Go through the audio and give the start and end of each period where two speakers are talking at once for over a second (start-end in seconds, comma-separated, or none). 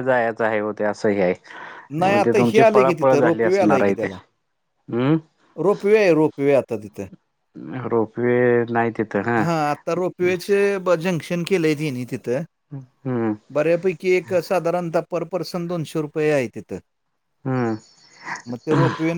2.2-4.1